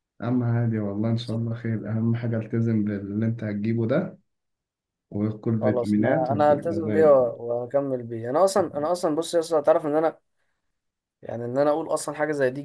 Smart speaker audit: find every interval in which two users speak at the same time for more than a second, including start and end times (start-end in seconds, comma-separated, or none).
5.6-7.3